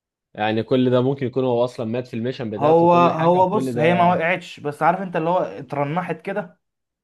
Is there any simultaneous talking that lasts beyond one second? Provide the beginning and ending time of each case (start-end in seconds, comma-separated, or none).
2.6-4.1